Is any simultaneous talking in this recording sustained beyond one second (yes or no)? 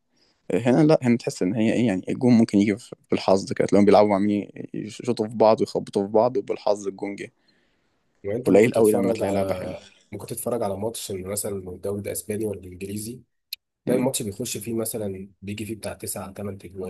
yes